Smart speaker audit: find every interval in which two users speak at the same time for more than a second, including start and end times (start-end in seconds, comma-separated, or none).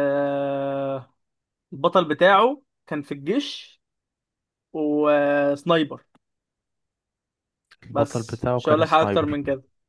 7.9-9.4